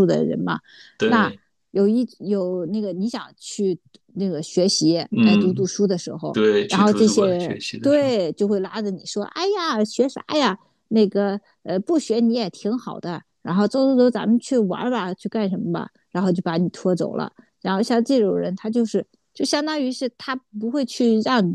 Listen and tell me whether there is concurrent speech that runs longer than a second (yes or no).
yes